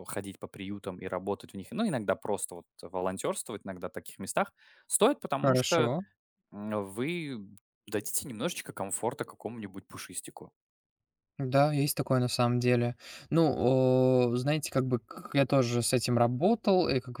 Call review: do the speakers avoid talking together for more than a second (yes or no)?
yes